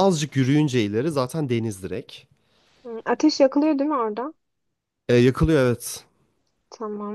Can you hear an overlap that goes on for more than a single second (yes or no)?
no